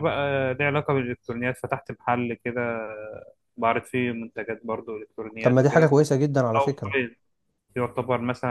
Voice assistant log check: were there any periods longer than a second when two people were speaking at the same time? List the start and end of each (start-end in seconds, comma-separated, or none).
none